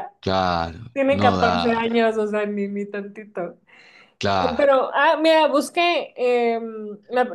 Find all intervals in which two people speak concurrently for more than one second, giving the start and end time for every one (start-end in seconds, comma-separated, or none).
0.9-2.2